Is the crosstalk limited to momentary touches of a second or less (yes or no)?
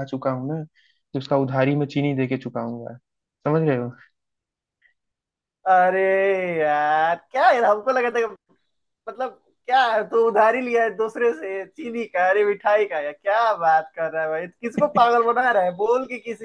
yes